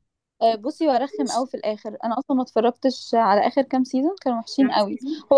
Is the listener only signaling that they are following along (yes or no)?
yes